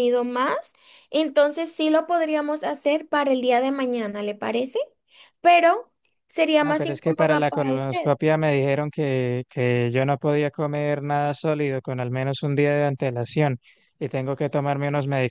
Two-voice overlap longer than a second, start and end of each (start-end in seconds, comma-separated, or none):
6.6-8.1